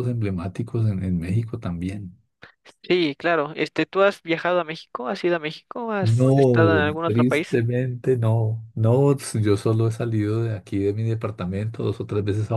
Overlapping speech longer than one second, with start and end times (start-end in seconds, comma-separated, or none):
6.0-7.6